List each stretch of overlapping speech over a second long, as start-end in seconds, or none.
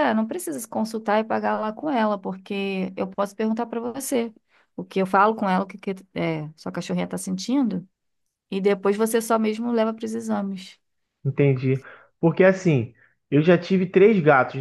none